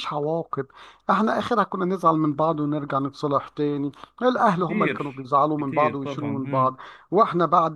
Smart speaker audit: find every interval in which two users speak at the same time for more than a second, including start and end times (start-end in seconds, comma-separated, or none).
4.5-6.7